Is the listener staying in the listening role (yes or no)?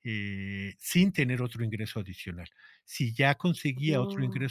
yes